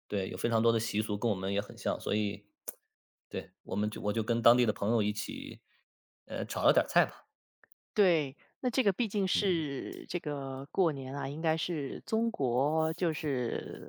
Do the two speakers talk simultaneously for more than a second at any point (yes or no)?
no